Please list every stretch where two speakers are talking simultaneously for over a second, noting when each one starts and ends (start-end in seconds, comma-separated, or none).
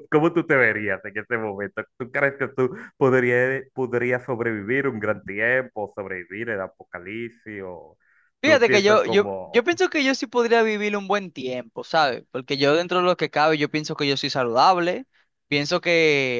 8.4-9.7